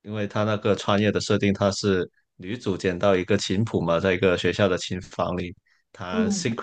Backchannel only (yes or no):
yes